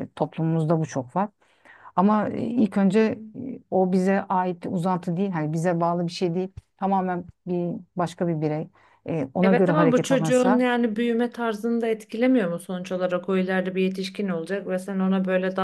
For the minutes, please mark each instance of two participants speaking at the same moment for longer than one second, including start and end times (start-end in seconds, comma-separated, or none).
9.4-10.6